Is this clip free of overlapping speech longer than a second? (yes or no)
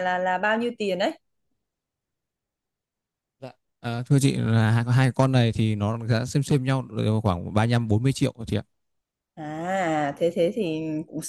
yes